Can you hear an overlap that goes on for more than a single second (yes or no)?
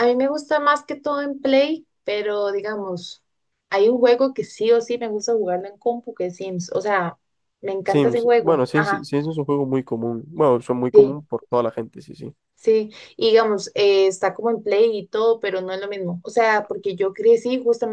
yes